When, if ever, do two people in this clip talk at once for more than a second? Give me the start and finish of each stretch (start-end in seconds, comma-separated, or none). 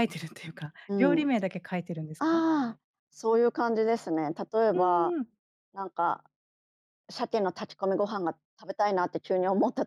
none